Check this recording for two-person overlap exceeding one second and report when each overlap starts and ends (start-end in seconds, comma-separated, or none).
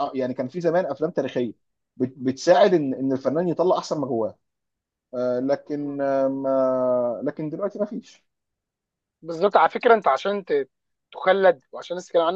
none